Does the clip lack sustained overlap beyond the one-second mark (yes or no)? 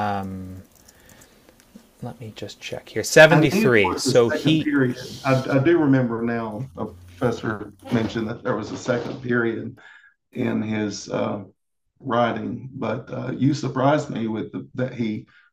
no